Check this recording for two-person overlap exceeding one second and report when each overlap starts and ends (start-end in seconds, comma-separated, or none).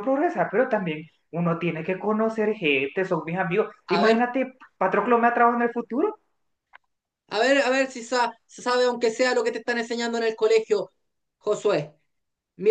none